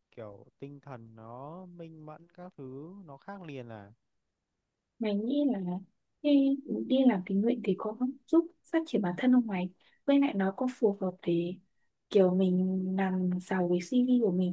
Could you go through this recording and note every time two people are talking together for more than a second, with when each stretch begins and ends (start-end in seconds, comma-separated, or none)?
none